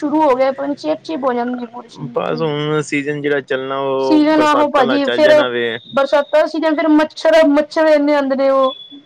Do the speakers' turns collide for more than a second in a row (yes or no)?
yes